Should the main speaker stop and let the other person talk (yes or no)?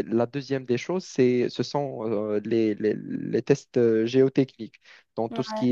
no